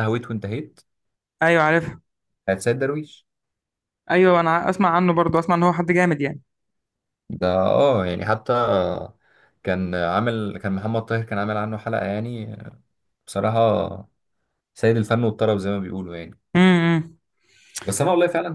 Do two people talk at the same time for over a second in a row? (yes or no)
no